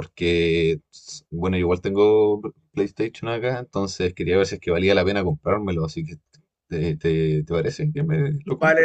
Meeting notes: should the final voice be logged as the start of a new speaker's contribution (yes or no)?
yes